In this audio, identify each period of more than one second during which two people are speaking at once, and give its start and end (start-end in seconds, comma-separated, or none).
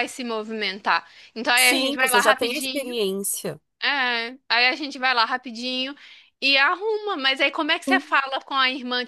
1.6-2.9